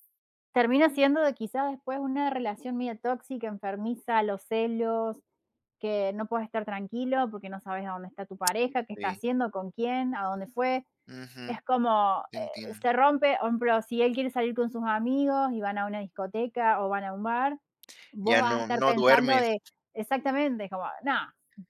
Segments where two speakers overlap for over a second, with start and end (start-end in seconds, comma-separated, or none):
18.2-19.5